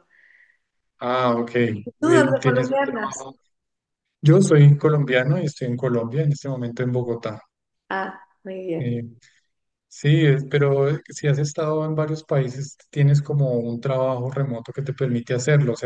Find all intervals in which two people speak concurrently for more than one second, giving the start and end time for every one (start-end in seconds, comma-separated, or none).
2.0-3.3